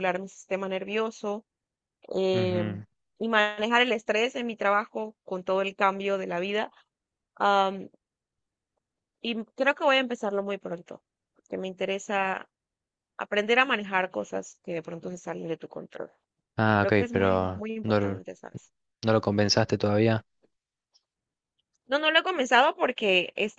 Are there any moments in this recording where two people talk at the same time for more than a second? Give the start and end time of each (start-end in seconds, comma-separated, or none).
16.7-18.2